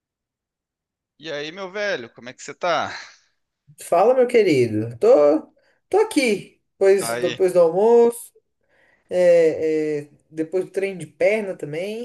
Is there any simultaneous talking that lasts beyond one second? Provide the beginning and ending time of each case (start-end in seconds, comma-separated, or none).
none